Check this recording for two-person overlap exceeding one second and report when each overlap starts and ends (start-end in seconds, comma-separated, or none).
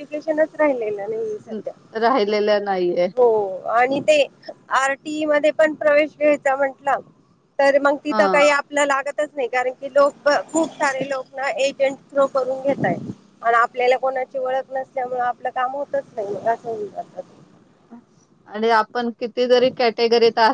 none